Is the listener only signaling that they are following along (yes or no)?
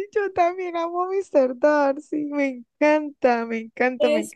no